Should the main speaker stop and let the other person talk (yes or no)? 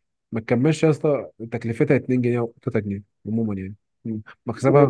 yes